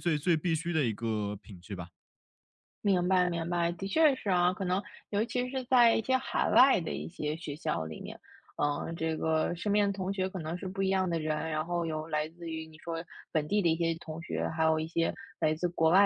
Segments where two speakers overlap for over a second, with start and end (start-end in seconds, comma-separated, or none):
none